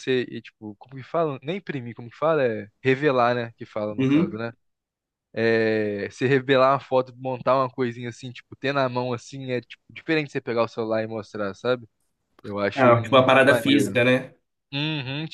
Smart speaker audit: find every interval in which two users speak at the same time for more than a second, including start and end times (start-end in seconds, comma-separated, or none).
12.7-14.0